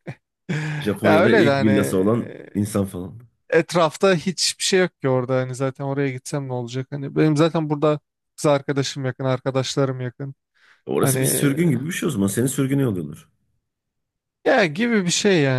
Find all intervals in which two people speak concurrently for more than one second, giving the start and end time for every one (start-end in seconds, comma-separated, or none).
1.0-2.5